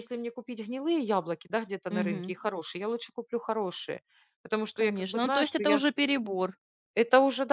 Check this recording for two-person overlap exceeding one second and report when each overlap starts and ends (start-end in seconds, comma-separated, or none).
4.7-6.0